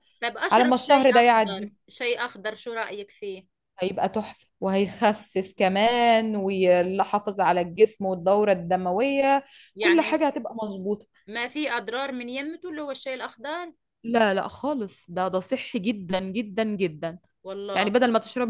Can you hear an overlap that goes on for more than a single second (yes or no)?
yes